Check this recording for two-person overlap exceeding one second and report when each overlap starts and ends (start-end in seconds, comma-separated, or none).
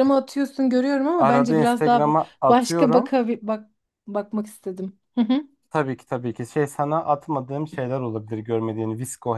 1.1-3.1